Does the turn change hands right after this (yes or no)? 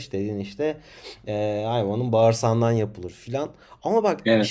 no